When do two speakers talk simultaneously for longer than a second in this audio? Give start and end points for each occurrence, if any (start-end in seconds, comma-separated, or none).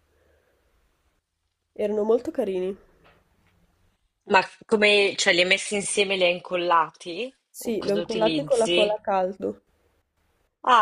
7.5-9.0